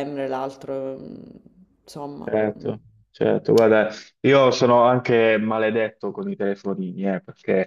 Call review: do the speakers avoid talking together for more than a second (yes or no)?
yes